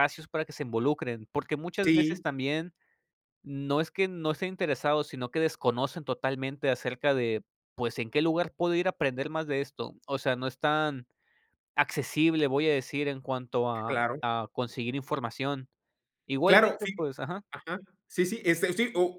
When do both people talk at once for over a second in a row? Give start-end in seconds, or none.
none